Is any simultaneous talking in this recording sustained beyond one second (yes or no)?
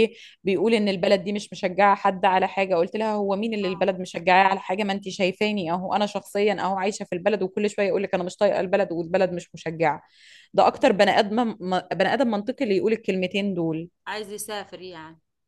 no